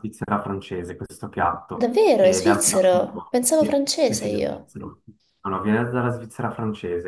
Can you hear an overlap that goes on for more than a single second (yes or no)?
yes